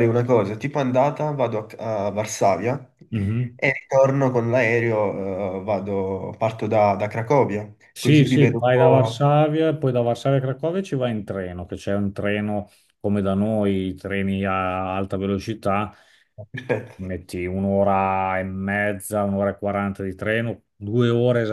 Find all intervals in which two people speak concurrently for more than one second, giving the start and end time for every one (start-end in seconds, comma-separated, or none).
8.0-9.2